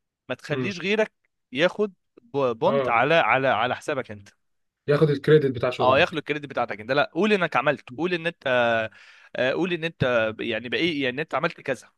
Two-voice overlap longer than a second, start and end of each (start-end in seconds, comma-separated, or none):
none